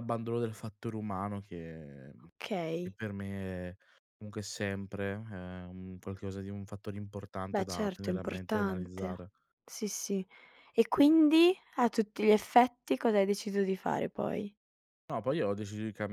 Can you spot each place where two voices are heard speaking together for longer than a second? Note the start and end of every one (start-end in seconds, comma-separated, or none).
7.5-9.3